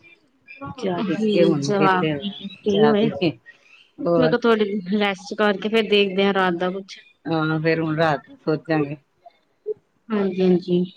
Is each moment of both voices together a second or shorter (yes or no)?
no